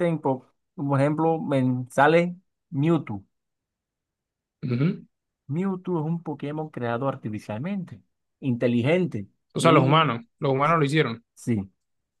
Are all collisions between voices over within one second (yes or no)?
yes